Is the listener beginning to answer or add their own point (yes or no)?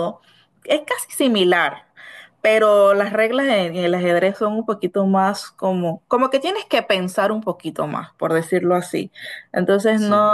no